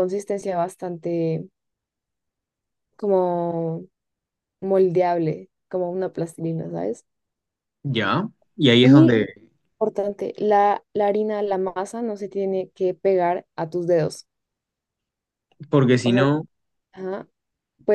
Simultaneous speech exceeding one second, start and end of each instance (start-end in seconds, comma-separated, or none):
none